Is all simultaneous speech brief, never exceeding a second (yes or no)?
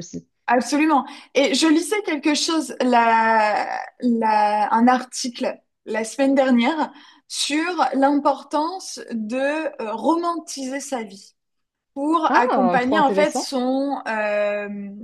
no